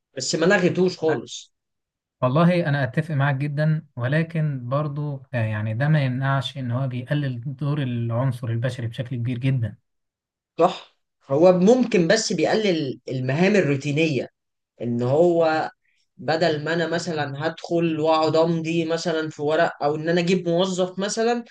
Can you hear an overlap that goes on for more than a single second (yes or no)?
no